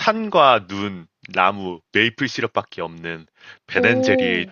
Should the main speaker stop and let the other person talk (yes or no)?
no